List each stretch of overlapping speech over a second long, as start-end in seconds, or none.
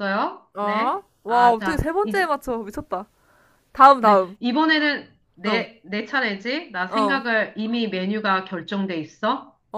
0.5-2.3